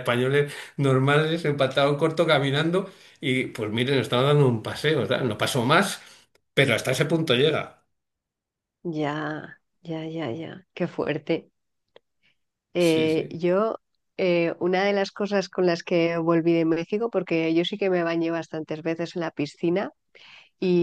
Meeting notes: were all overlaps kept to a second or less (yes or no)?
yes